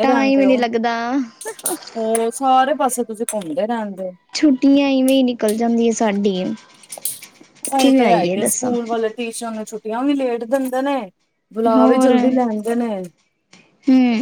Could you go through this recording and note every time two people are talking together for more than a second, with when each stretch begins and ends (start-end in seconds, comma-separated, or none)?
none